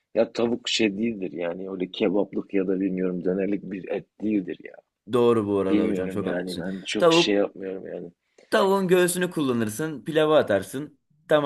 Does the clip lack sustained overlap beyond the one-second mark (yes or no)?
no